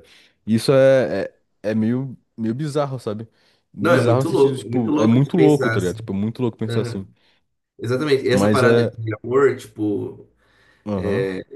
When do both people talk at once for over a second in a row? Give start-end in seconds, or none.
3.8-6.0